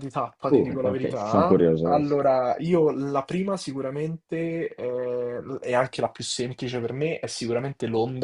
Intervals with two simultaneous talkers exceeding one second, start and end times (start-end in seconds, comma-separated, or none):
0.5-2.2